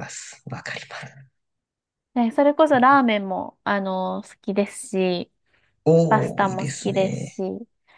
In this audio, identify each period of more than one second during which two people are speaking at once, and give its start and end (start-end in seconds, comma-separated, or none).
6.1-7.4